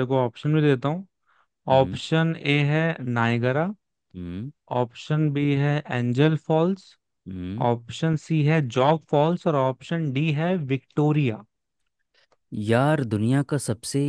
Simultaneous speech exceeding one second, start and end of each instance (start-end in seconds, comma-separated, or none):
none